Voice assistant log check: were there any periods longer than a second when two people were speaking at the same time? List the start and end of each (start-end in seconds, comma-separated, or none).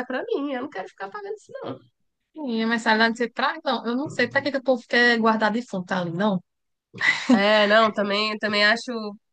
none